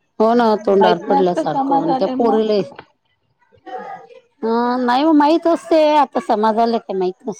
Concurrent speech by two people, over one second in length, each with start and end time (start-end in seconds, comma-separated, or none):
0.8-2.5